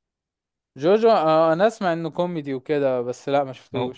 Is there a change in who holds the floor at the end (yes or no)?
yes